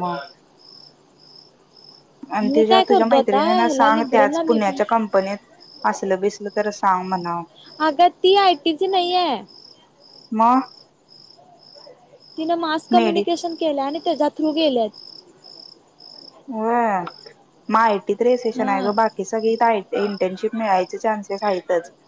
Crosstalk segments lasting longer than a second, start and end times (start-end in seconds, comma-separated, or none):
2.5-4.8